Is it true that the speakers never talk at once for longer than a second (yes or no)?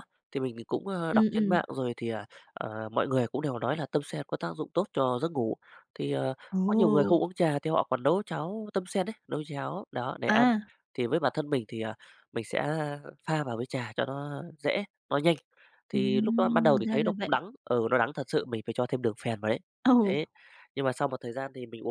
no